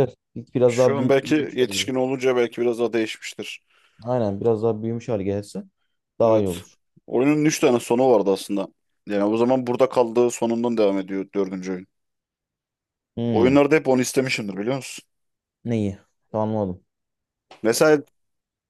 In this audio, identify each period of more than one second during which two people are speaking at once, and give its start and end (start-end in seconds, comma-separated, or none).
0.7-2.0